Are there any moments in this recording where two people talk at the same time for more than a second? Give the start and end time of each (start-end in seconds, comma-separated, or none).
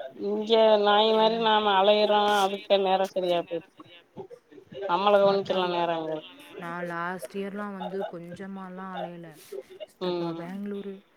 none